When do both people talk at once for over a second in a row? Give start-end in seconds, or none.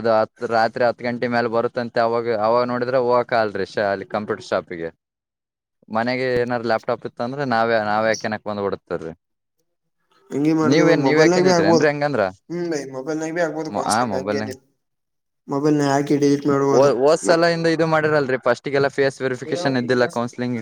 none